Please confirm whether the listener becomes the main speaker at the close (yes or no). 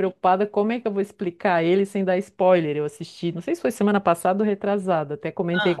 no